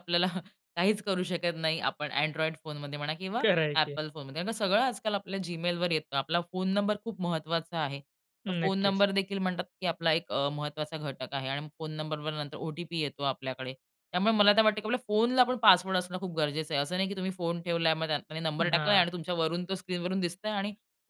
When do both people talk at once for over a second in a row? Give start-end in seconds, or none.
none